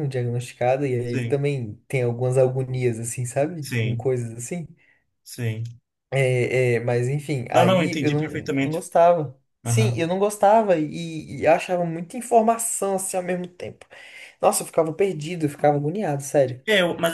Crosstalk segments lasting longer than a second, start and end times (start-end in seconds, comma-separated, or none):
7.5-8.8